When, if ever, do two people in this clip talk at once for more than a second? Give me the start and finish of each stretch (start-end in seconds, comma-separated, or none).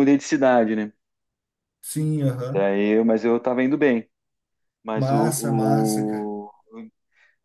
5.0-6.3